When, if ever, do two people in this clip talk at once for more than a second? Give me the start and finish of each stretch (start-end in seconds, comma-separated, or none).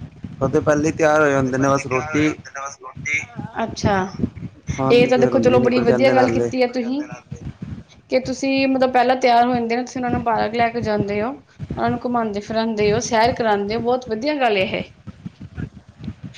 4.9-6.5